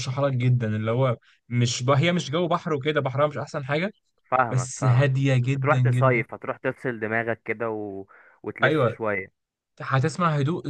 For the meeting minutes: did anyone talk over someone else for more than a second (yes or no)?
yes